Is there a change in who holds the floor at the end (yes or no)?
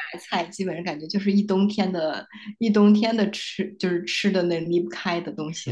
yes